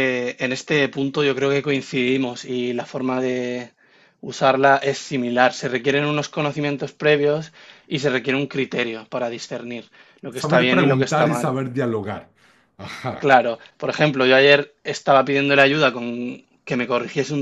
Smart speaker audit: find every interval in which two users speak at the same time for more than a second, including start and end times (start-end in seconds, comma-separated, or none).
10.3-11.6